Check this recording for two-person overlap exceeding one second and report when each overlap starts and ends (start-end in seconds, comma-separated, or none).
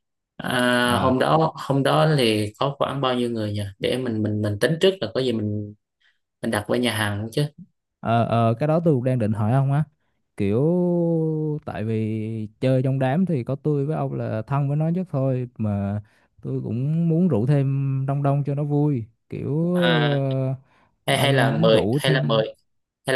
21.1-22.4